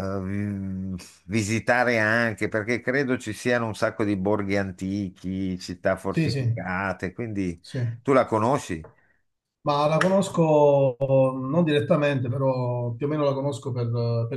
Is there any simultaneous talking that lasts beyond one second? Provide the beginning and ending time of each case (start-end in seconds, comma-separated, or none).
none